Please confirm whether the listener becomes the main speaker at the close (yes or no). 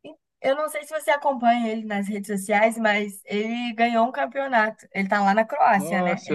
yes